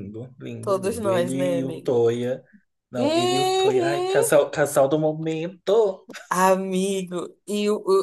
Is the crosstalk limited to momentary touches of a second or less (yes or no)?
no